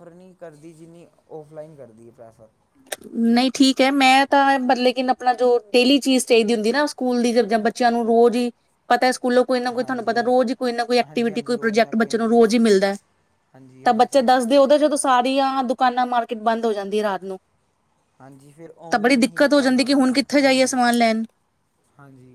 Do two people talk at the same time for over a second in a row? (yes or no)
yes